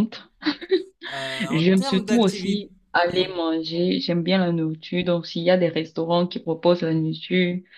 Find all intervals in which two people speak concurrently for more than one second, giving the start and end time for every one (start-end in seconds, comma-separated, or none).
1.5-2.7